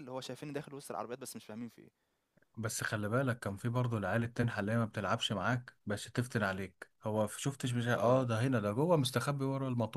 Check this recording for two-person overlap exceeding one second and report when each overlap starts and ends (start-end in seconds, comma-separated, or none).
none